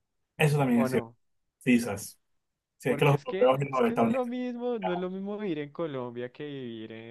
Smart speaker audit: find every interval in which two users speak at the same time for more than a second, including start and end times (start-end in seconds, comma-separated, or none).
2.9-4.3